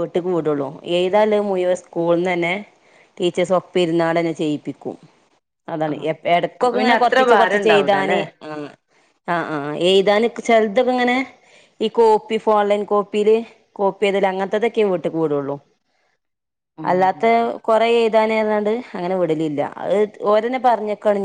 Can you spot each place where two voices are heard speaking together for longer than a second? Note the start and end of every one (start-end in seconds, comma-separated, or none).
6.6-8.2